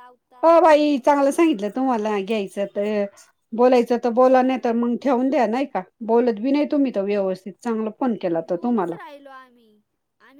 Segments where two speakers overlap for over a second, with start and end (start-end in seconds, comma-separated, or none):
none